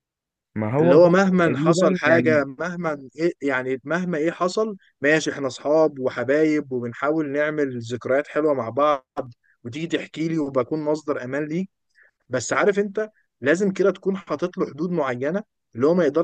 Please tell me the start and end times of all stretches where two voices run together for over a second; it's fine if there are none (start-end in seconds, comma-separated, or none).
0.8-2.4